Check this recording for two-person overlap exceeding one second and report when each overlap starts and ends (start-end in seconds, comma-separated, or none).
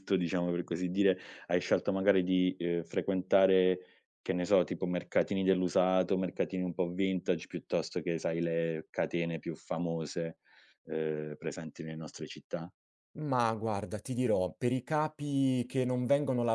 none